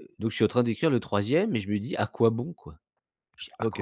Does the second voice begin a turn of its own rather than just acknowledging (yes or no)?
yes